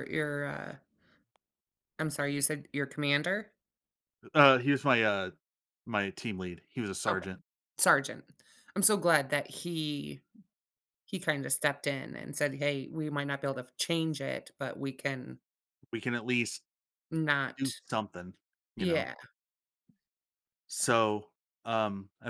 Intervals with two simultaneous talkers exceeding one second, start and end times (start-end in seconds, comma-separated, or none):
none